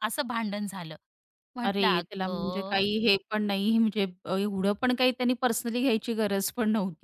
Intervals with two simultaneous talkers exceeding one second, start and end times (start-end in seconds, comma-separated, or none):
1.6-2.9